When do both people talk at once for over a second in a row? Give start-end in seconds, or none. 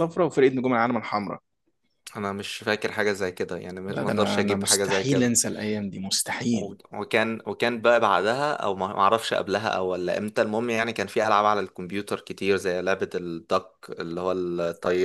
3.9-5.4